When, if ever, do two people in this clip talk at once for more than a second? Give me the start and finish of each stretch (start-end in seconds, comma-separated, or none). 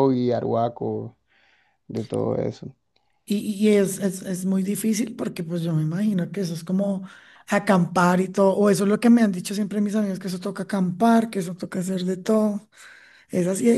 none